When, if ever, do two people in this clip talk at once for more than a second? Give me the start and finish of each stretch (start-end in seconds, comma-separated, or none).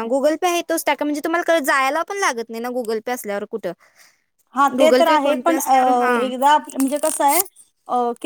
4.8-6.3